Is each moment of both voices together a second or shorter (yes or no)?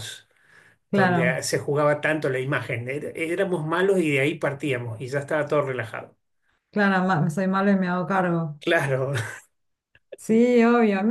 yes